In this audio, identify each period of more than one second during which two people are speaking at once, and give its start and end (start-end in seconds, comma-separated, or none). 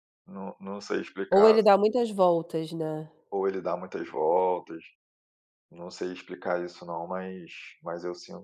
none